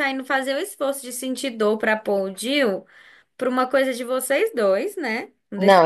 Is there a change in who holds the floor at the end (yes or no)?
yes